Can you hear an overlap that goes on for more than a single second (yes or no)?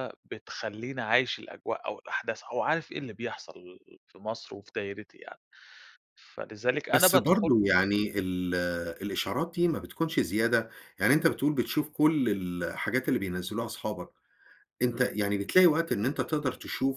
no